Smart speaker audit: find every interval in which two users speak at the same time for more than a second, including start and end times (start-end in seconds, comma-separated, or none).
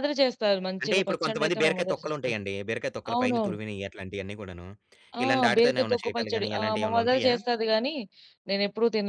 0.8-2.4, 5.2-7.3